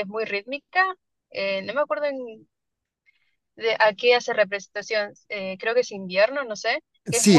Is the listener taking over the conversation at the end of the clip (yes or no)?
yes